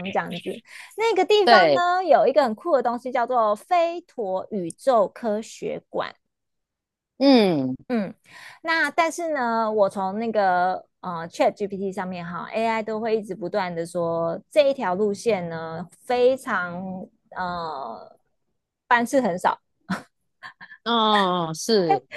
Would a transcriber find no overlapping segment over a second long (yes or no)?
yes